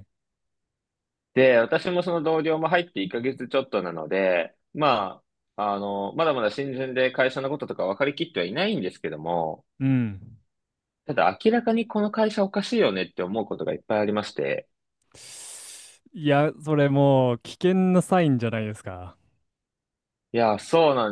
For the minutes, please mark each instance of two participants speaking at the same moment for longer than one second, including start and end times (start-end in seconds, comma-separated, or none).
none